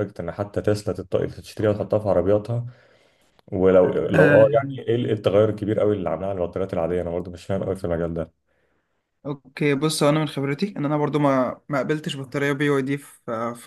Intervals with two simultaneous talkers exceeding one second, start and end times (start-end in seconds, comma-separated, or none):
none